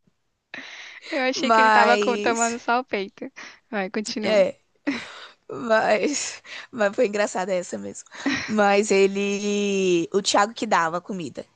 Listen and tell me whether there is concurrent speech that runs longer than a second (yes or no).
yes